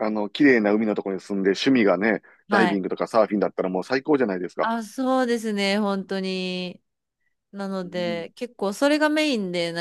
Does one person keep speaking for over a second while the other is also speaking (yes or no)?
no